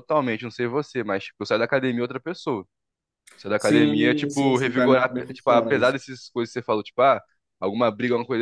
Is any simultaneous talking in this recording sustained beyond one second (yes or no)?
yes